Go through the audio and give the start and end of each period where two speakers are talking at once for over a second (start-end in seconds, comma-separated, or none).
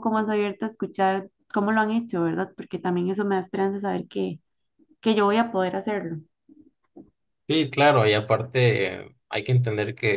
none